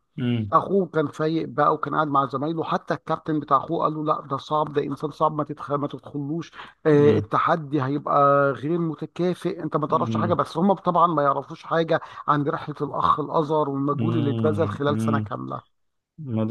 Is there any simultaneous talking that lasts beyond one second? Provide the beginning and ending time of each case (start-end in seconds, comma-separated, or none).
13.9-15.3